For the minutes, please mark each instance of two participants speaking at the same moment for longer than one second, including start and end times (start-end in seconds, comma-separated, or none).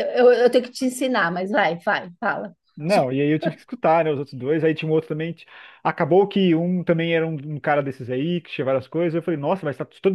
none